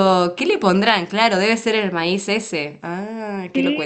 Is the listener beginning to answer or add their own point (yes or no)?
yes